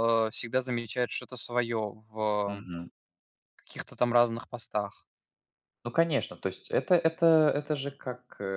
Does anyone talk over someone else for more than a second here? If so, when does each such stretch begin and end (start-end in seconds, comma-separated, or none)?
none